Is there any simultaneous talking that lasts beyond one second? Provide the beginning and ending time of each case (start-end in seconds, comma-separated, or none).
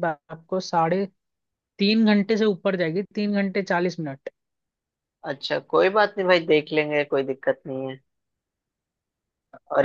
none